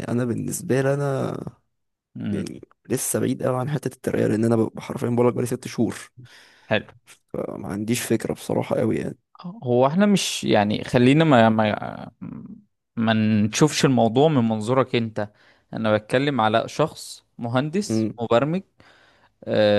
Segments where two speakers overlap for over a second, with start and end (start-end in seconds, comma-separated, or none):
none